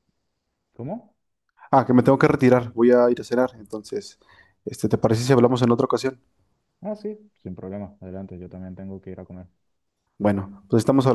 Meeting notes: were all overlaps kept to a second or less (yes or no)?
yes